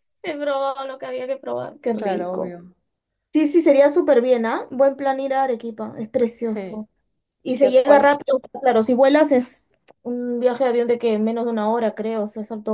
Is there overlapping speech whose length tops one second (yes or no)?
no